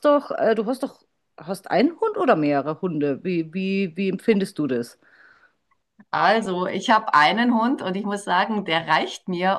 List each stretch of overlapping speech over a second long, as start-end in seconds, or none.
none